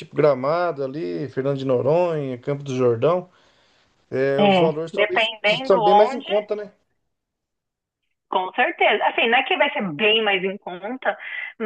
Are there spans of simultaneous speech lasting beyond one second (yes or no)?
yes